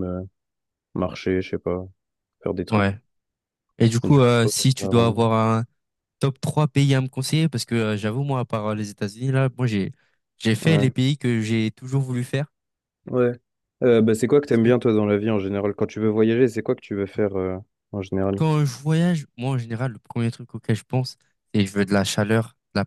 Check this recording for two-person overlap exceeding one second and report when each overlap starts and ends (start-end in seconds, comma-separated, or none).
4.0-5.3